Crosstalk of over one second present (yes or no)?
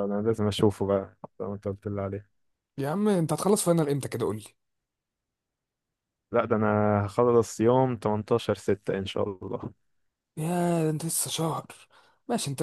no